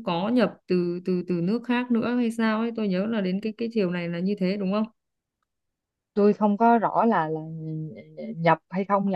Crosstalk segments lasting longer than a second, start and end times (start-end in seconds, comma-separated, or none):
none